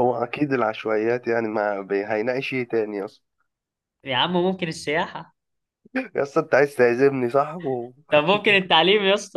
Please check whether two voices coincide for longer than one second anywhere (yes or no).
no